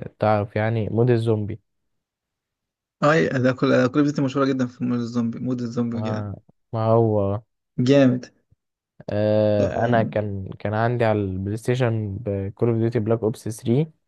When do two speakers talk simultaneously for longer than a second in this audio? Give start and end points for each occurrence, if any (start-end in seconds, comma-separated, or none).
none